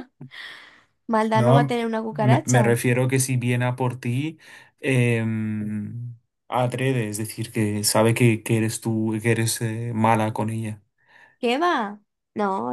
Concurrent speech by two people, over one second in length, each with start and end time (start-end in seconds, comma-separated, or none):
1.3-2.8